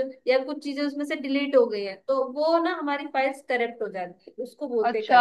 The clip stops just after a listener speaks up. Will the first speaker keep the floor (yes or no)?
no